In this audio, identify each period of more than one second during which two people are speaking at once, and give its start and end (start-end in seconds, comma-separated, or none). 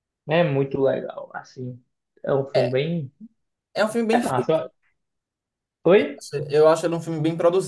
none